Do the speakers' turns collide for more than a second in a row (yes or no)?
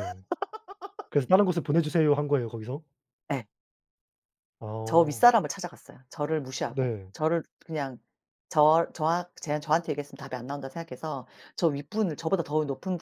no